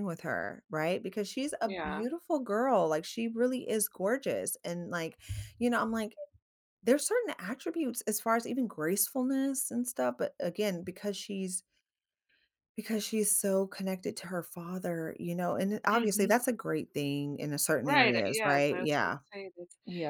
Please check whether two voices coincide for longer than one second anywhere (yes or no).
yes